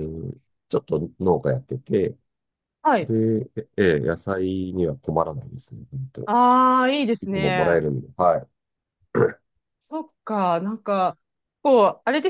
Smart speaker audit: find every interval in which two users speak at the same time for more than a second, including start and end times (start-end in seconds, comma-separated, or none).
none